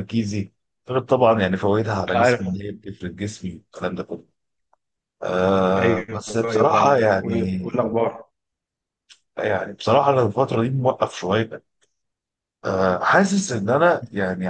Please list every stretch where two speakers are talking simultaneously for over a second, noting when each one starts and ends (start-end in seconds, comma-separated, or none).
5.8-7.6